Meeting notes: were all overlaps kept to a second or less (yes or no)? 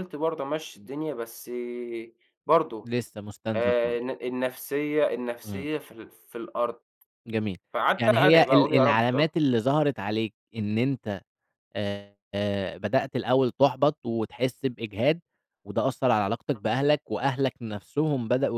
no